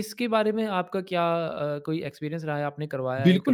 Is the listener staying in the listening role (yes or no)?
no